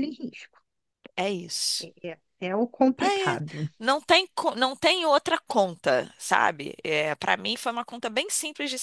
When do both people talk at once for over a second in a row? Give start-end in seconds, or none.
none